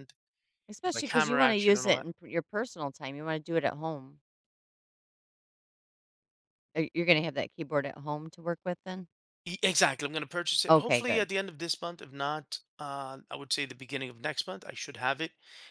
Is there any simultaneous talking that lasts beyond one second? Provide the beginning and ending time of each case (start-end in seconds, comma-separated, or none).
0.8-2.1